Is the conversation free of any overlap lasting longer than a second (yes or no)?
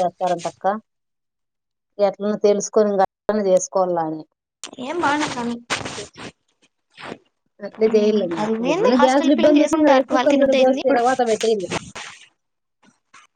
no